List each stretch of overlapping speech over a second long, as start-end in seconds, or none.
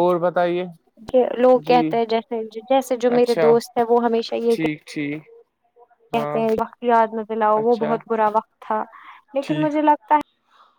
none